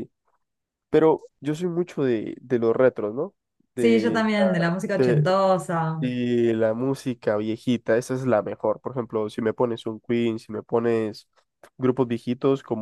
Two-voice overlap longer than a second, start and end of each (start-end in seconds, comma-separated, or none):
3.8-5.3